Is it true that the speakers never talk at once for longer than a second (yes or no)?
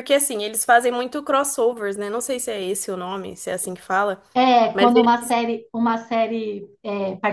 yes